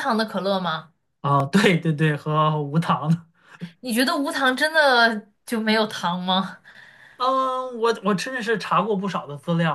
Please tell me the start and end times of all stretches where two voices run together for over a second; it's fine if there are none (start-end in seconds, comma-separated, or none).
none